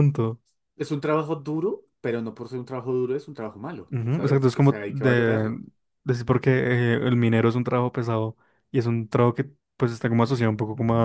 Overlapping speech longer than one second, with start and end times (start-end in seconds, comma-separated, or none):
3.9-5.6